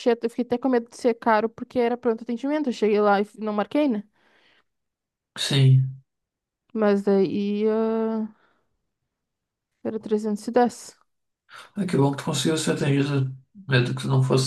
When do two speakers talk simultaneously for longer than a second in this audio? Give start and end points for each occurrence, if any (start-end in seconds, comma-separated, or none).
none